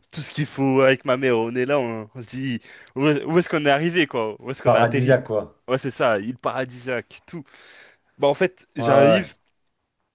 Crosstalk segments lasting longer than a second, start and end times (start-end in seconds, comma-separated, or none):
none